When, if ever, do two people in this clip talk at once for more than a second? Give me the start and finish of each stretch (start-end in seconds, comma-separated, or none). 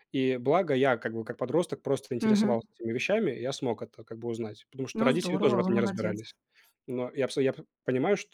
4.9-6.2